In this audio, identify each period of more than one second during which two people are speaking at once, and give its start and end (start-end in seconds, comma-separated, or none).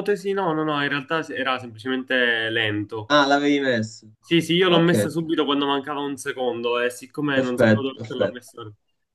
7.3-8.5